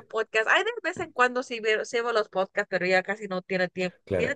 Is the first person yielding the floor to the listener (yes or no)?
yes